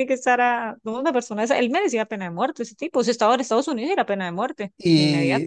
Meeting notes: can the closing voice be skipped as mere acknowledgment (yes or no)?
no